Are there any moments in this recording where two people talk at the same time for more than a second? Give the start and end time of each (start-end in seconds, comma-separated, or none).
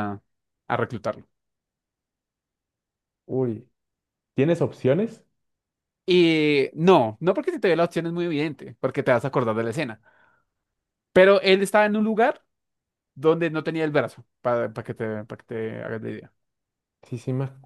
none